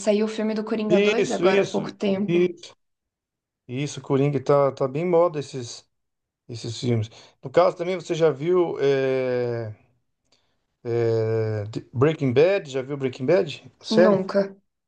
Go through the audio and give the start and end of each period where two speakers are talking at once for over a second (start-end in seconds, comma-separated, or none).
0.9-2.5